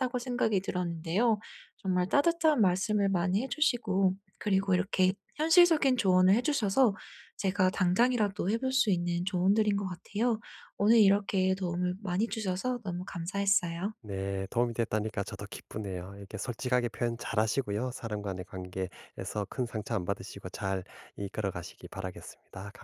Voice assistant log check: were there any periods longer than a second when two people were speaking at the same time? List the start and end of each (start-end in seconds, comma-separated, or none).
none